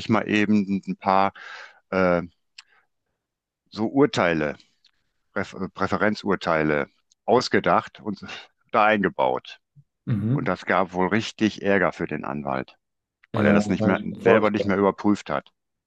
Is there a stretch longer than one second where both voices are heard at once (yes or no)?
yes